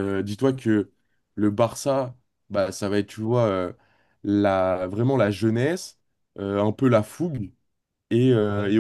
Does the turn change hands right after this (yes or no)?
no